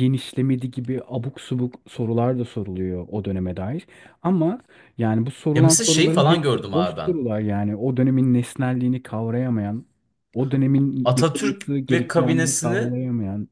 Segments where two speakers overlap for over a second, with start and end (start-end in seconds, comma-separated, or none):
5.5-7.1, 11.0-12.9